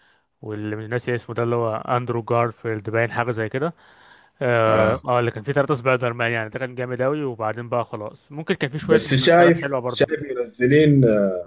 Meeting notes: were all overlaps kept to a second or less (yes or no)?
no